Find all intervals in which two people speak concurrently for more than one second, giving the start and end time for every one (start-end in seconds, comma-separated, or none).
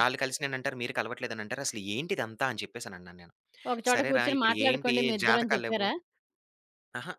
3.9-5.9